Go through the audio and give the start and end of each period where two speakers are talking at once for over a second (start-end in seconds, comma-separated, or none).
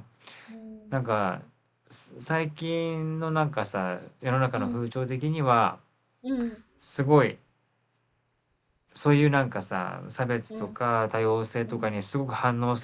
none